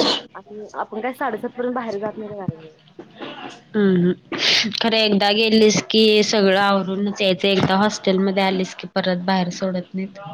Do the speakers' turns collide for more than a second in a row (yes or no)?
no